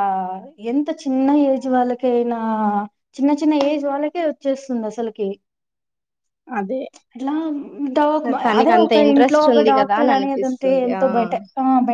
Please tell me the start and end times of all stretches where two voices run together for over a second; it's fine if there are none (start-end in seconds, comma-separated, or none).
8.6-11.0